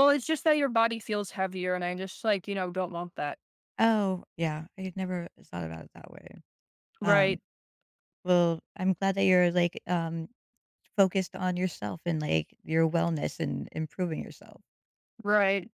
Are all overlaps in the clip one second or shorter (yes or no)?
yes